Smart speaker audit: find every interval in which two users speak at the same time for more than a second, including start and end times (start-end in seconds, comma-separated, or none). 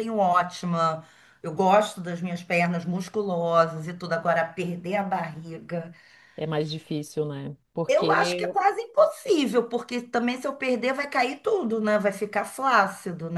none